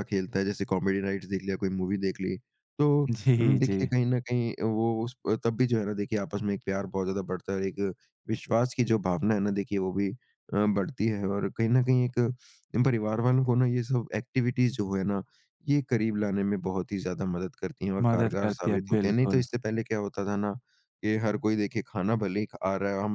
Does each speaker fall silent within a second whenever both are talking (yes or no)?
no